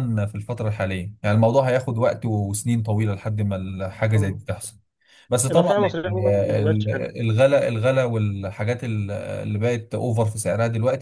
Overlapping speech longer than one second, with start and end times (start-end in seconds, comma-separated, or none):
5.5-7.1